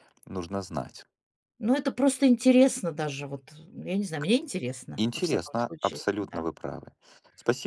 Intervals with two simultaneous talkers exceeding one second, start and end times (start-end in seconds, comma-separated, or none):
5.0-6.5